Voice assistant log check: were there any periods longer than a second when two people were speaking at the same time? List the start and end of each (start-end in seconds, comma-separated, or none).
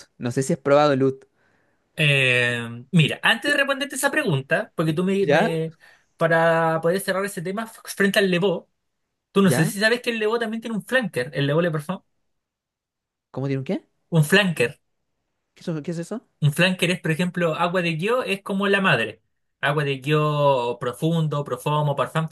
none